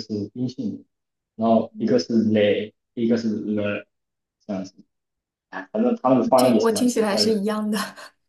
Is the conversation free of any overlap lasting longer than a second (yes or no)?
no